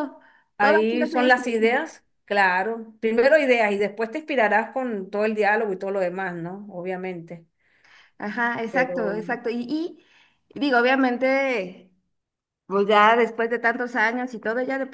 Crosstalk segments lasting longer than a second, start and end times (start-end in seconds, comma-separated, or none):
0.6-1.8